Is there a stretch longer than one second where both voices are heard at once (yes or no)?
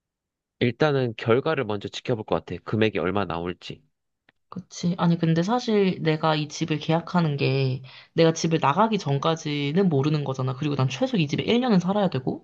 no